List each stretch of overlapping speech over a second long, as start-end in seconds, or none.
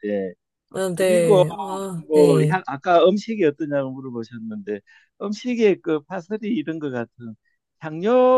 none